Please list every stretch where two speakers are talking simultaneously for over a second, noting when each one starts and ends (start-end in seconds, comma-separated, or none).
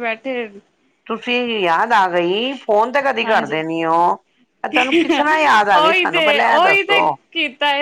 none